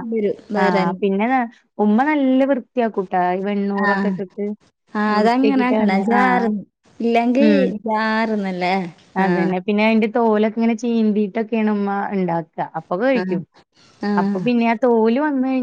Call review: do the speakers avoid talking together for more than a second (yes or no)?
no